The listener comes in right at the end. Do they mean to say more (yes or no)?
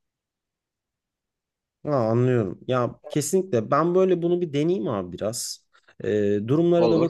no